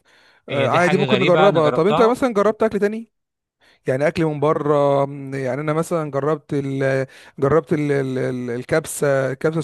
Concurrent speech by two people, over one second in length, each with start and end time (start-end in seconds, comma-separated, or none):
0.5-2.2